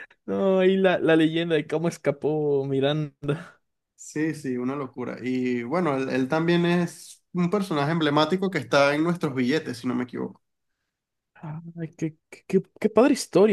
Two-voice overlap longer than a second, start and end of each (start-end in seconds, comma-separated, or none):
none